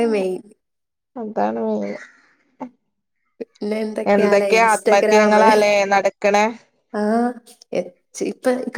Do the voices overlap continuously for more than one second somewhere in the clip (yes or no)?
yes